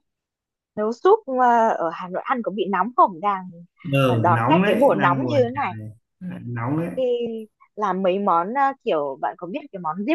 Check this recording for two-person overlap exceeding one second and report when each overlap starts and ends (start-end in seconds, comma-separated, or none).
4.0-5.7